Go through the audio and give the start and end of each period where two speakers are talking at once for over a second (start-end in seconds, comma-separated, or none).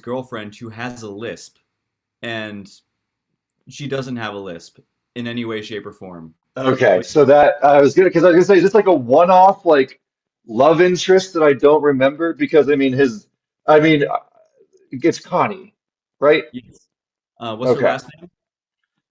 none